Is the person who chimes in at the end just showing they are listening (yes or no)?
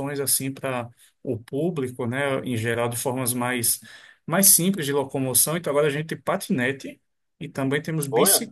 yes